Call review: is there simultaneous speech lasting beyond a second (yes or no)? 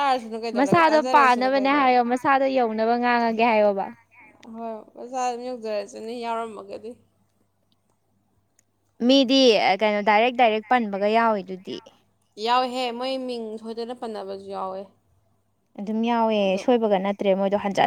yes